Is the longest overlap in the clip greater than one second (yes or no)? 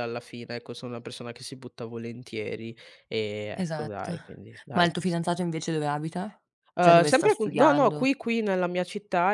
yes